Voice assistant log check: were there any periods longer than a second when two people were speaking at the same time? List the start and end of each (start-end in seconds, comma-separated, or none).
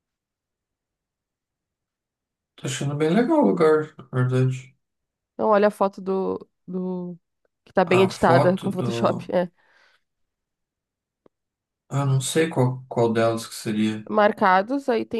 8.0-9.3